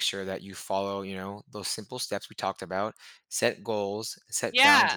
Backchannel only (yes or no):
yes